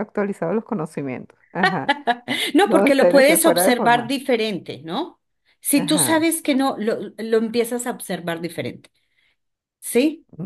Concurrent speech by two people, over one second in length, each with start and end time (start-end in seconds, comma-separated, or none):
2.6-4.1